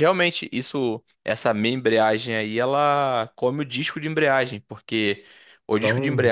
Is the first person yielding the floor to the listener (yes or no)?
no